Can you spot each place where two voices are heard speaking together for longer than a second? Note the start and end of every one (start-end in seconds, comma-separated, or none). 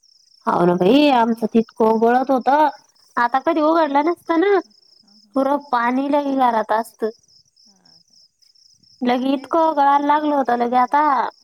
9.2-10.9